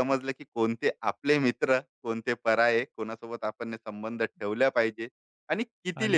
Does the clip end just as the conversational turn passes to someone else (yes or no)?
yes